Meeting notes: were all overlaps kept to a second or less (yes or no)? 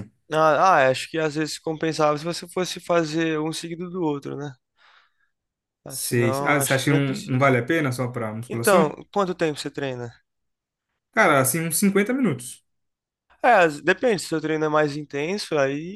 no